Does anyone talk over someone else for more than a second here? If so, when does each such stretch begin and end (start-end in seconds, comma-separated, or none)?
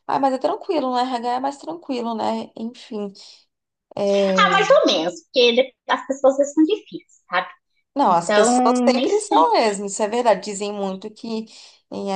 8.1-9.4